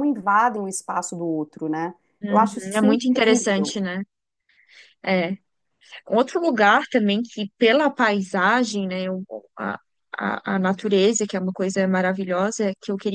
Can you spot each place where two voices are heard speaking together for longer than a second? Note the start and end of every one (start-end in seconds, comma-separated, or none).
2.2-3.8